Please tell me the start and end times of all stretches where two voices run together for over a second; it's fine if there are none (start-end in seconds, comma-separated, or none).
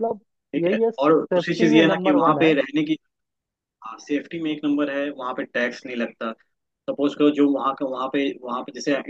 0.7-2.5